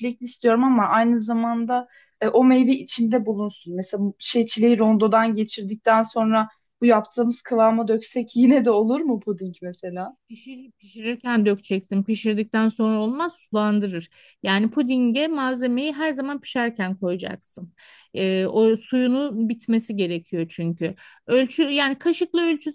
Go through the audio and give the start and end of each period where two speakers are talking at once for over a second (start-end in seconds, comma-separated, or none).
none